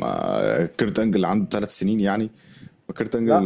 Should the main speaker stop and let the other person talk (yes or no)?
no